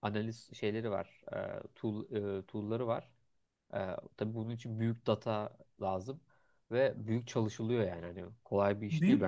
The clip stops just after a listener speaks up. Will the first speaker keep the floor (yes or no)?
no